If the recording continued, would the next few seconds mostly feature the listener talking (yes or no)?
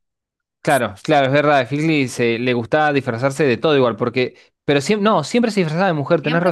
yes